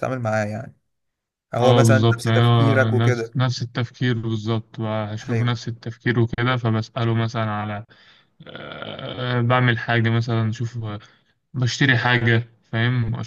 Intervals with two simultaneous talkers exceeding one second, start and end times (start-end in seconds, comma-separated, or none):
1.6-3.4